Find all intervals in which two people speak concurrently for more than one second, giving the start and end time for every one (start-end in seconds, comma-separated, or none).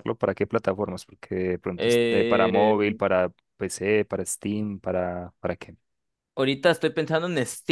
1.8-3.0